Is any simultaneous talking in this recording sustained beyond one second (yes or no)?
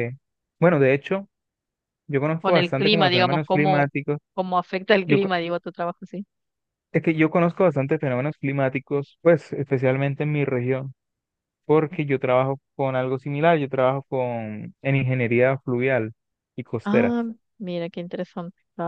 yes